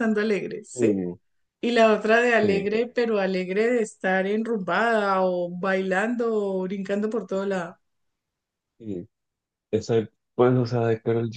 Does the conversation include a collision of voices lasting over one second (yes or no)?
no